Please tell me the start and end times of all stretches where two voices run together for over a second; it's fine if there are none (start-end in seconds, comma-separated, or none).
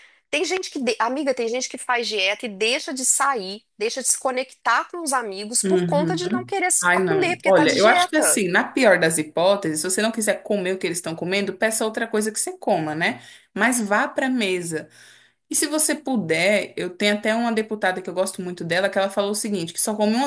6.8-8.4